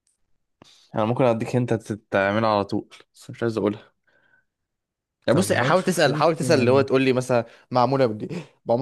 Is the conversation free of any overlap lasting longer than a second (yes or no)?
no